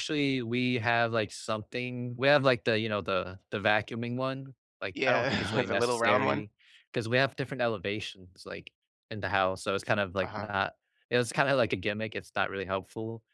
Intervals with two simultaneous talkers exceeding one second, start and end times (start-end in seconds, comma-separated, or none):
4.9-6.4